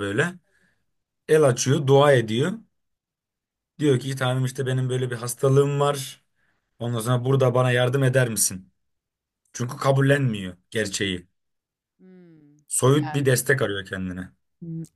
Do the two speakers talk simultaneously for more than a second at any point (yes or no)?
no